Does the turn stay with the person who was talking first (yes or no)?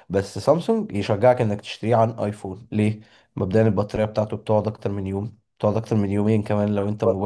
no